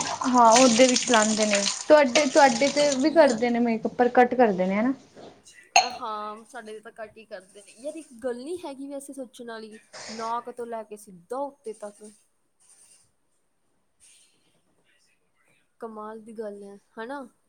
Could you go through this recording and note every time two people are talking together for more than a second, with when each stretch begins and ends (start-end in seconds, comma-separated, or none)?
none